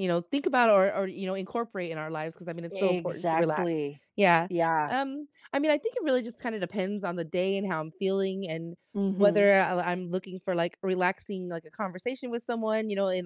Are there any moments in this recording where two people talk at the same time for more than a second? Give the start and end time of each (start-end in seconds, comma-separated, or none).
2.7-4.0